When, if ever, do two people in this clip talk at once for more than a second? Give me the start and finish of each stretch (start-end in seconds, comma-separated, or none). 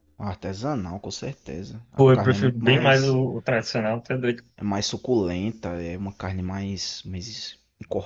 1.9-3.2